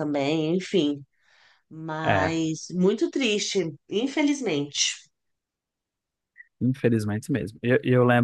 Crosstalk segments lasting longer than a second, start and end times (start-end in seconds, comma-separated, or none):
none